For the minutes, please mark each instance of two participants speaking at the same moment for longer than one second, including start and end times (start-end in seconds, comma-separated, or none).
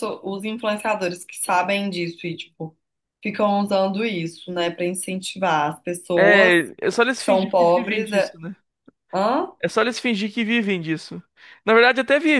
7.2-8.4